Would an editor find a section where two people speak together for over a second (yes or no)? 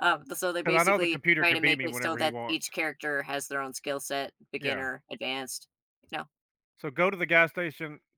yes